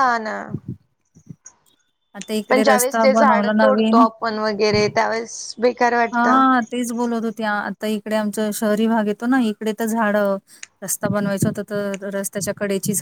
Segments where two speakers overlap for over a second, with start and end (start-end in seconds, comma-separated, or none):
2.5-4.0